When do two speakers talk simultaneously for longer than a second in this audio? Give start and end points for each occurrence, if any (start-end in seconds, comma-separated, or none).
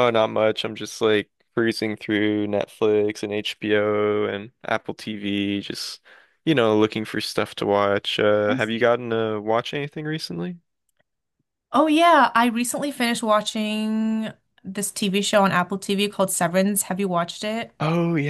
none